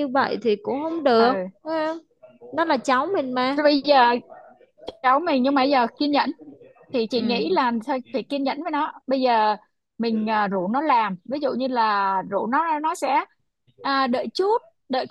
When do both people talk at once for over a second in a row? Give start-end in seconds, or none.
none